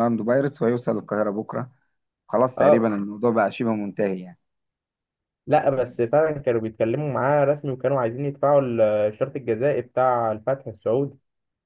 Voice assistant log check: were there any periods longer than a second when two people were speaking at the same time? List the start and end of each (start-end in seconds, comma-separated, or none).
none